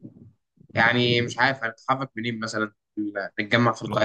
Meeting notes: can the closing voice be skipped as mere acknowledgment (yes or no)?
no